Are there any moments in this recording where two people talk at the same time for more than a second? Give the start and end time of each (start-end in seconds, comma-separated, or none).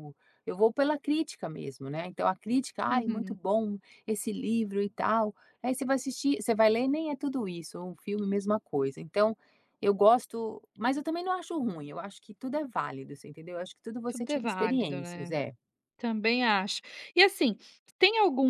14.1-15.3